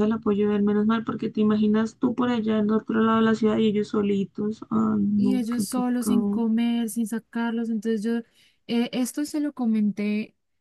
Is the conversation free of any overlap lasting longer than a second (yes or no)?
no